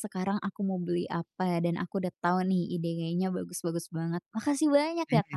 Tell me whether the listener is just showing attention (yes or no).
no